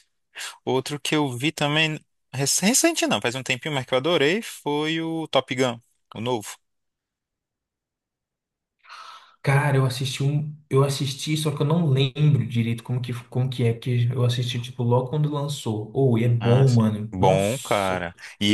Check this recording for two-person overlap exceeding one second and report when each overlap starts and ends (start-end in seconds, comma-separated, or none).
16.4-18.0